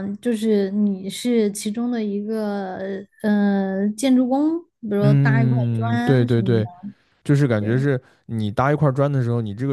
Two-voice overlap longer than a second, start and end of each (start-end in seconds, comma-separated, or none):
5.0-6.7